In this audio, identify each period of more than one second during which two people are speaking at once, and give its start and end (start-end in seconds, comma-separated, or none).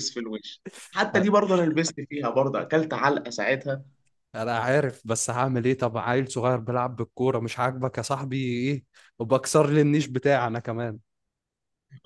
none